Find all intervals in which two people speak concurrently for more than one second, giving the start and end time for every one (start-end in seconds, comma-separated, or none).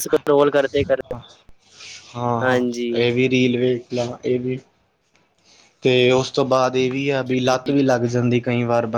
none